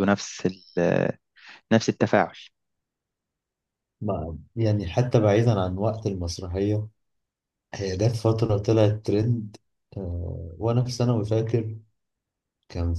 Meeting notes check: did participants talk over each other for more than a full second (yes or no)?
no